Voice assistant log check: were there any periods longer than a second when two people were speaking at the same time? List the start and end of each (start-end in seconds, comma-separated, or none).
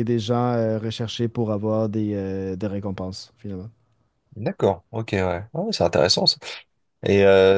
none